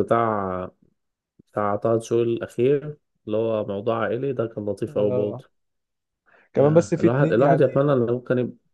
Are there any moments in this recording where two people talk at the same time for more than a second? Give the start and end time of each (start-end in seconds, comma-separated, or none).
6.5-7.8